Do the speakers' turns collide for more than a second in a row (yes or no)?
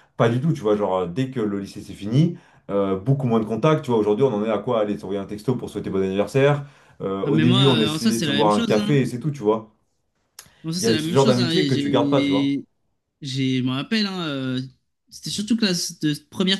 yes